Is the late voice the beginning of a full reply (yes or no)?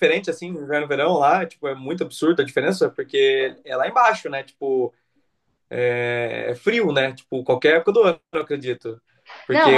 no